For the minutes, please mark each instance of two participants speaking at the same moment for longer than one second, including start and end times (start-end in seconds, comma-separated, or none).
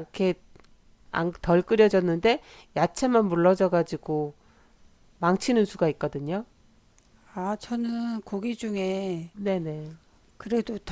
none